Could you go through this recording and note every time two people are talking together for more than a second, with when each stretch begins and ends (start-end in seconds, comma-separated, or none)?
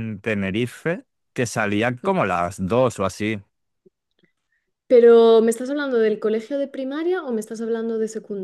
none